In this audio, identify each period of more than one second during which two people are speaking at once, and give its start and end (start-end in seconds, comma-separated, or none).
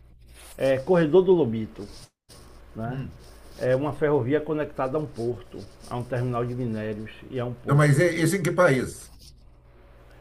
none